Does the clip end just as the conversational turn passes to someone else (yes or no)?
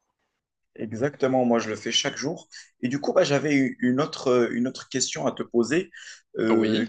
no